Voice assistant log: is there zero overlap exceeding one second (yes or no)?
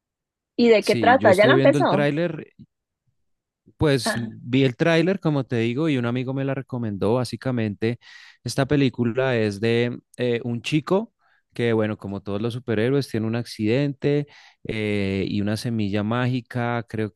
no